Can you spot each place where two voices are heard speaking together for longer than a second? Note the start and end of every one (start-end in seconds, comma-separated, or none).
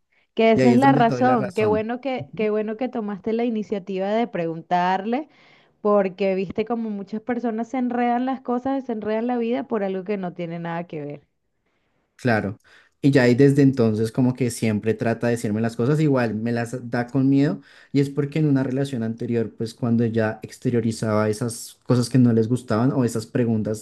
0.5-1.9